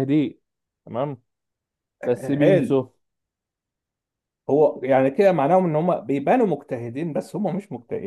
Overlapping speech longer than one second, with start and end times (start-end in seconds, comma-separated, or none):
none